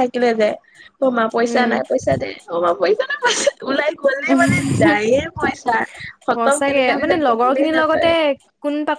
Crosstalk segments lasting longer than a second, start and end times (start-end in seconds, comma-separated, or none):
6.3-8.1